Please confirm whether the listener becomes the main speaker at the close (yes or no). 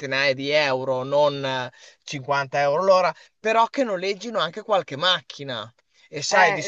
yes